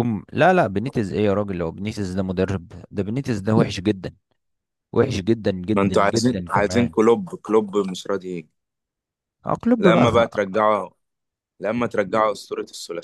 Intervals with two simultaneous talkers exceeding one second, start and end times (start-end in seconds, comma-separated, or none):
5.7-7.0